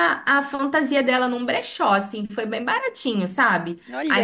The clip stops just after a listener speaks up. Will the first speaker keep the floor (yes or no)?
yes